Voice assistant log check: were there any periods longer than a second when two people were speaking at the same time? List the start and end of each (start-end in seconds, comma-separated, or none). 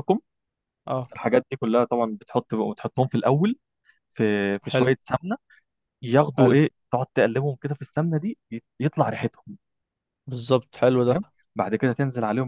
none